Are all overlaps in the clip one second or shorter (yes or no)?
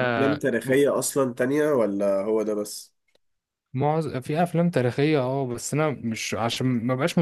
yes